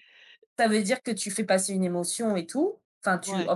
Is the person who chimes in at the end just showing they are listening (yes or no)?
yes